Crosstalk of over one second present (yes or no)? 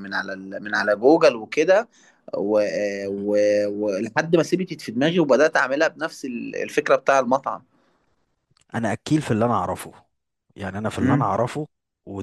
no